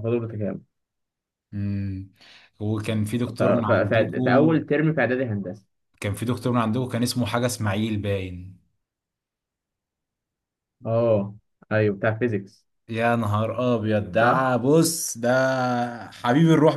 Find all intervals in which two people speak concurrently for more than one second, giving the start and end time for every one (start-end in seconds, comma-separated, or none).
3.3-4.6